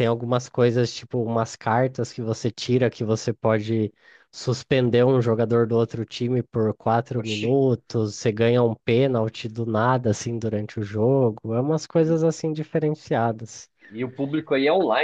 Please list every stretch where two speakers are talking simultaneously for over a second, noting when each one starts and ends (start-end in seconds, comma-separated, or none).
none